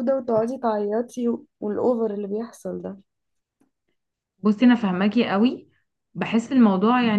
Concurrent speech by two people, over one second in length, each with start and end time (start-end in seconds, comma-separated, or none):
none